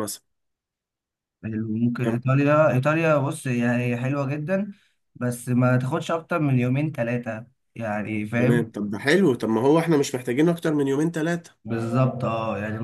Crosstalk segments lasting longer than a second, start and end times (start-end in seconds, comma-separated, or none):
none